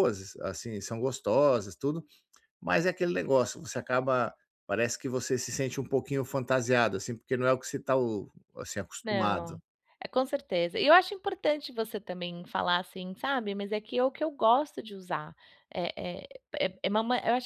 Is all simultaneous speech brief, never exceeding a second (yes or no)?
yes